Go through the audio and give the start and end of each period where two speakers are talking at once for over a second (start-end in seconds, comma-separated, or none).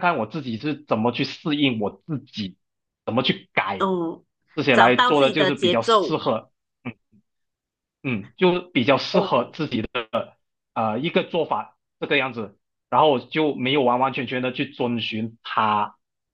4.7-6.2